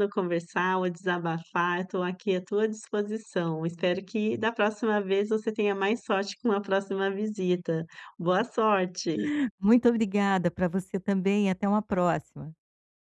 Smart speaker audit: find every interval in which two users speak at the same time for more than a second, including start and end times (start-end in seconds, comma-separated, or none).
none